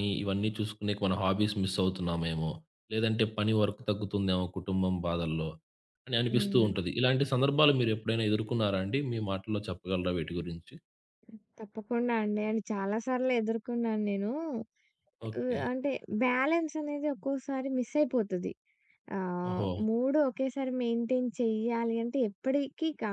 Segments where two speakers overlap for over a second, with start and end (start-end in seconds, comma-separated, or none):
none